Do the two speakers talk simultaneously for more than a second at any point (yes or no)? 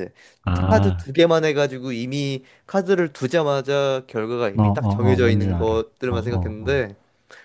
yes